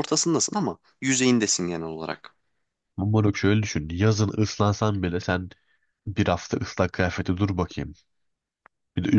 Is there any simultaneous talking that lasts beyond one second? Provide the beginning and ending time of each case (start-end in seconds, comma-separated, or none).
none